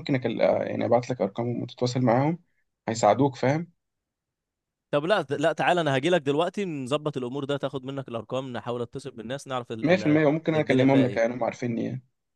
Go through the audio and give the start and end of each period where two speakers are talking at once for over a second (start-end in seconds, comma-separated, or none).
9.8-11.4